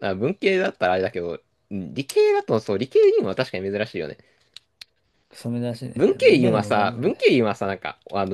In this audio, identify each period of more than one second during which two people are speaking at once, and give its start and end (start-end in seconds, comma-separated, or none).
5.9-7.4